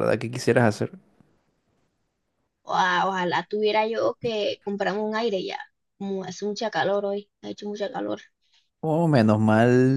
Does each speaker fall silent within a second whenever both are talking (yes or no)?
yes